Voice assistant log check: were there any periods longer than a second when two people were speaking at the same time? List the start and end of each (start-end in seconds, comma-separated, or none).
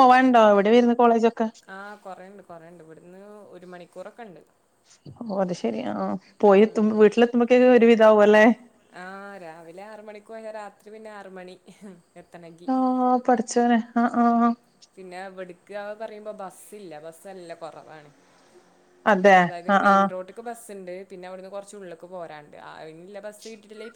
none